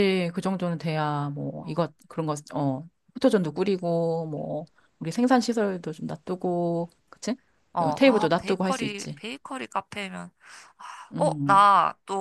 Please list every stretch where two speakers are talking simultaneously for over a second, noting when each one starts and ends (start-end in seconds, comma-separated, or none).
7.8-9.2